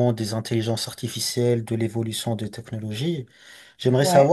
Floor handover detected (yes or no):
no